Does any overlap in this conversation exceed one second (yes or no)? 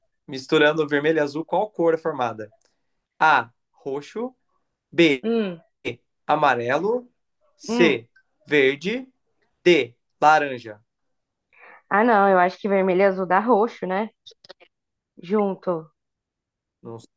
no